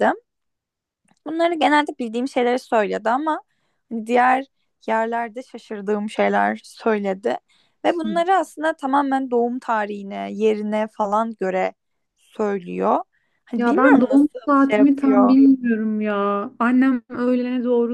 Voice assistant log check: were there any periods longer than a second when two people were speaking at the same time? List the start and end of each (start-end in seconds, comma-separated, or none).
13.6-15.4